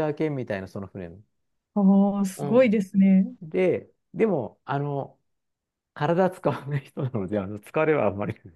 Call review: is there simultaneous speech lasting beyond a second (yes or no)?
no